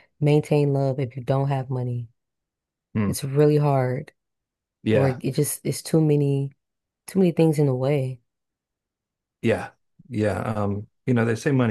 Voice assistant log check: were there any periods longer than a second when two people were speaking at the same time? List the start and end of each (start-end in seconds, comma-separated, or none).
none